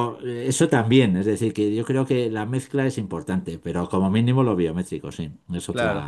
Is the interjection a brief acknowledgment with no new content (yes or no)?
no